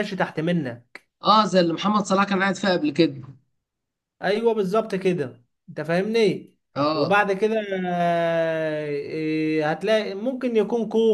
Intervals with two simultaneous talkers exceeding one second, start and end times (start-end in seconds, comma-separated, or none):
none